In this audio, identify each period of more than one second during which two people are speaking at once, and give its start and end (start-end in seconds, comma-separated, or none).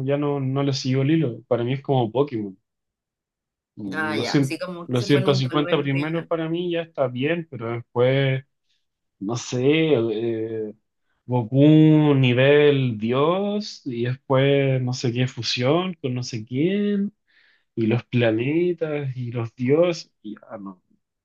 3.9-6.2